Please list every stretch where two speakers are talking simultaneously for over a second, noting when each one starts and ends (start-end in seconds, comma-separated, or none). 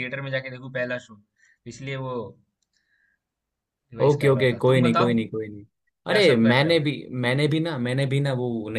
4.0-5.5